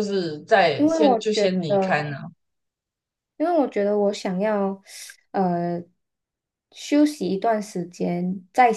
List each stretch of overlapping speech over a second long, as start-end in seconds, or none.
0.7-2.2